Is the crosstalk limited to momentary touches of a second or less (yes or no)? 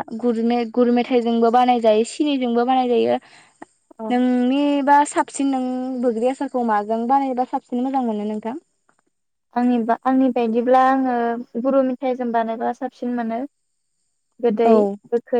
yes